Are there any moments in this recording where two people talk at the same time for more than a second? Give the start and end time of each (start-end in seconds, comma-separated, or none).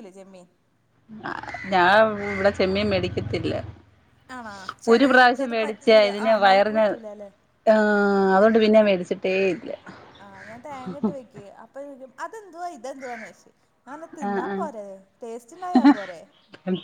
4.9-6.8